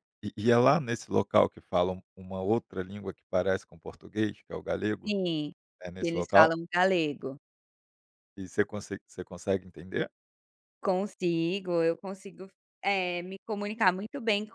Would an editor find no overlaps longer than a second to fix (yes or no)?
yes